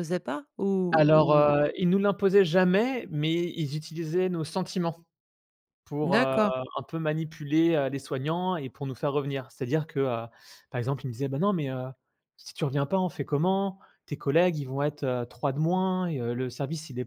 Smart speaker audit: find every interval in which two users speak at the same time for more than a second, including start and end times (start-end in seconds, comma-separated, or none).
none